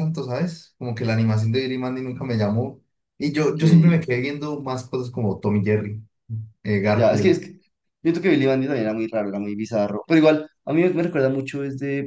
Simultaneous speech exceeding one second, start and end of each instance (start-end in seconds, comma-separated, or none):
none